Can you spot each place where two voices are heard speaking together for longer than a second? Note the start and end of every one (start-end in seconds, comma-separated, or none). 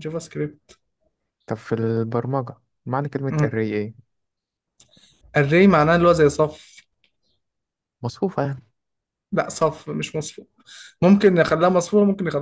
none